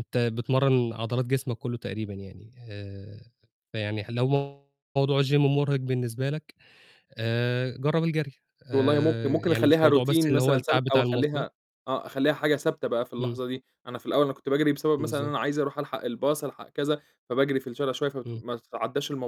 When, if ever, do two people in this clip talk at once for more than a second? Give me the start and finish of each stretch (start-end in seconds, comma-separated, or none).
8.7-11.5